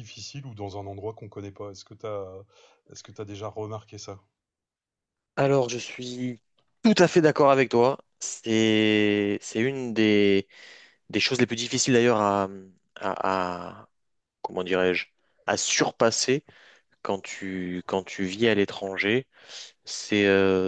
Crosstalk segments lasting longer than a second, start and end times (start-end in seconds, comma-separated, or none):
none